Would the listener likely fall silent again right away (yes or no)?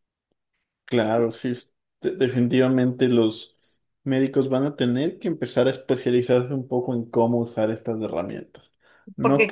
no